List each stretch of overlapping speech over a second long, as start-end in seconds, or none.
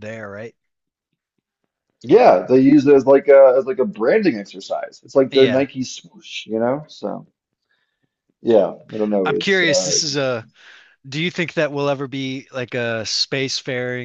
9.2-10.4